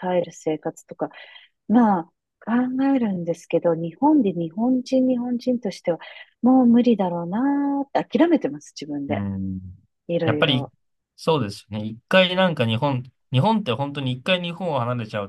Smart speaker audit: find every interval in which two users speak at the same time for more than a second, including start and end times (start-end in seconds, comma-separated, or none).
none